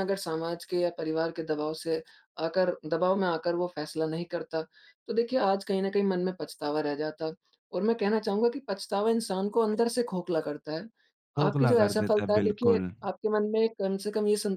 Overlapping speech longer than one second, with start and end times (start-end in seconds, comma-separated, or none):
11.4-12.9